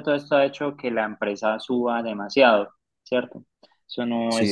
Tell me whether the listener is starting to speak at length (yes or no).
no